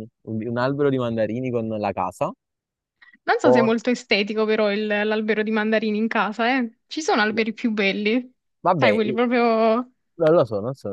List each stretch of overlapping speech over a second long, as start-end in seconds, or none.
none